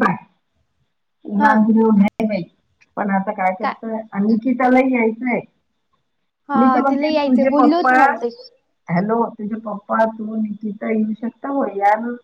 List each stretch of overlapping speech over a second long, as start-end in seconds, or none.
6.6-7.9